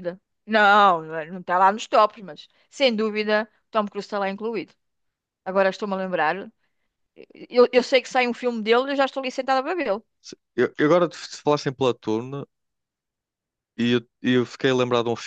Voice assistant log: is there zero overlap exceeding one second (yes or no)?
yes